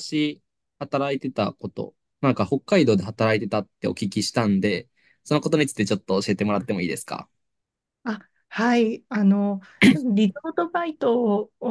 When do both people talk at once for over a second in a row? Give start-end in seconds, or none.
none